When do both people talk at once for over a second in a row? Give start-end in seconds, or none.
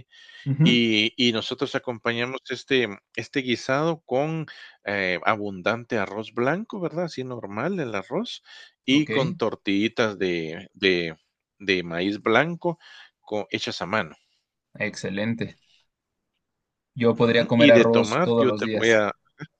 17.1-19.0